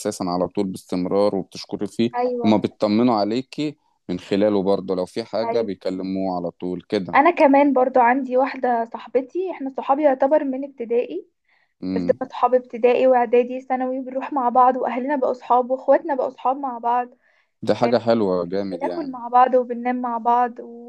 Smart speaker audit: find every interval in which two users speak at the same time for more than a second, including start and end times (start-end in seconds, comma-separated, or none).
none